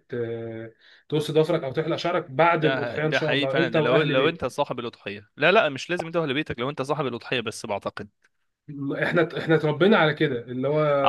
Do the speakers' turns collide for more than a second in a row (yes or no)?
yes